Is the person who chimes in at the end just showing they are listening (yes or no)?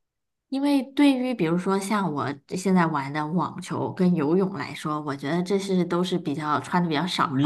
no